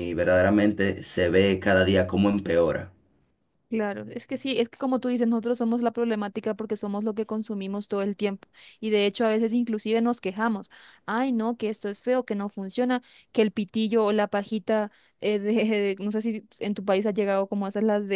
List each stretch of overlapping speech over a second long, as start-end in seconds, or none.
none